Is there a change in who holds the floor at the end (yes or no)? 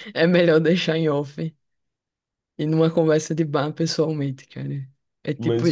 yes